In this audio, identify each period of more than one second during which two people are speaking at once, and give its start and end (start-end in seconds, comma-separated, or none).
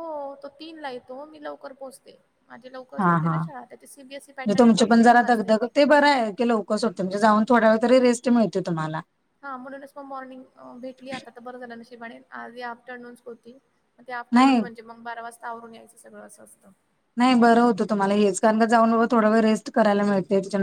3.0-5.7